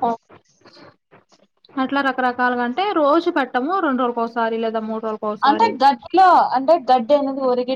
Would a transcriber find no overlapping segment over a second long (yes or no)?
yes